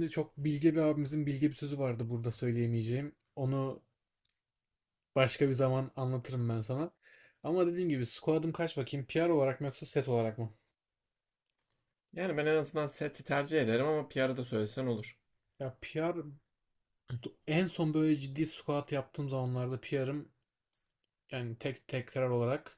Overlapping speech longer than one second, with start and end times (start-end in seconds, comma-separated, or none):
none